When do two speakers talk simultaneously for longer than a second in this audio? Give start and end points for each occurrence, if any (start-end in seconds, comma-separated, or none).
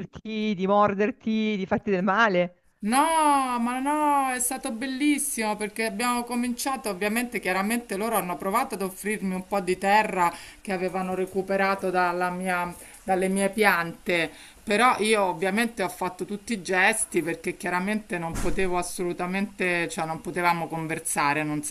none